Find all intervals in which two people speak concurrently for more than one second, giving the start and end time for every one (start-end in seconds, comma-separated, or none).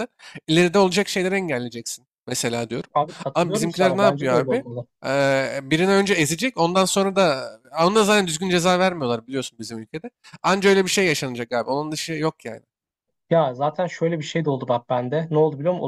3.3-4.6